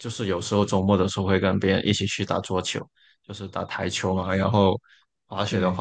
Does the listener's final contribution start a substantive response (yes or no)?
no